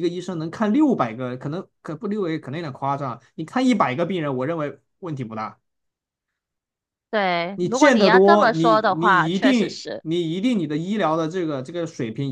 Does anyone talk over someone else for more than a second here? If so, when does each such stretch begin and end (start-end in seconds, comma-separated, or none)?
7.5-10.0